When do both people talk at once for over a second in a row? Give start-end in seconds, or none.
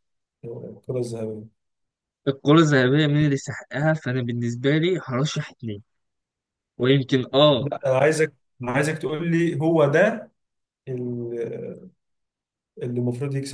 none